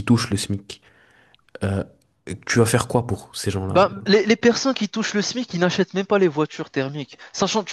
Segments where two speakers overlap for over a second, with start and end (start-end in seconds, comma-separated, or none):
none